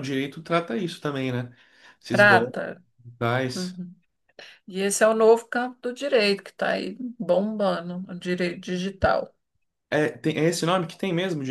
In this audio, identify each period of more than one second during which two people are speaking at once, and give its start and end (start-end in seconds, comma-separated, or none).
none